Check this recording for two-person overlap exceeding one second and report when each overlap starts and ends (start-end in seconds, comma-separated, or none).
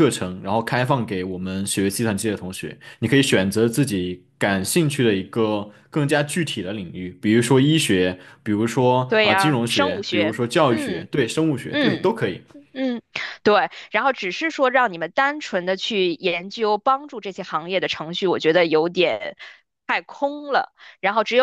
9.1-11.1